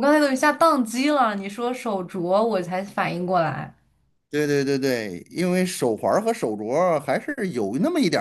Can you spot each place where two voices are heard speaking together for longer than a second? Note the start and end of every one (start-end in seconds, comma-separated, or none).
none